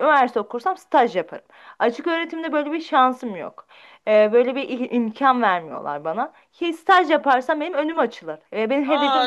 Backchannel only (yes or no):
no